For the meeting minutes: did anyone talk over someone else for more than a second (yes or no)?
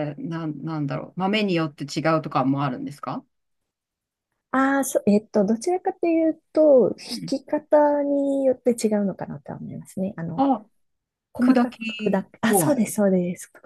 yes